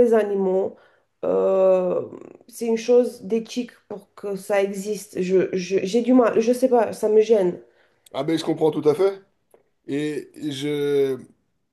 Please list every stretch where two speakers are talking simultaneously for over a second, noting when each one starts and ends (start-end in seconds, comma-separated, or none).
none